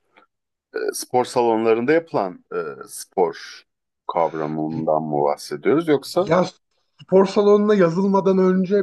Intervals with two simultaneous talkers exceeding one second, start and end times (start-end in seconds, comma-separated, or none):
none